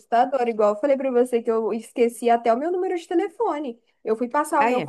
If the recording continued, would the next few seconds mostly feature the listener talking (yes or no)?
no